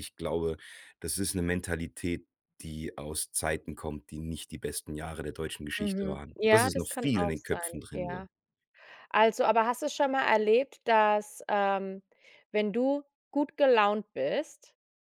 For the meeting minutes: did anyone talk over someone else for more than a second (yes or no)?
yes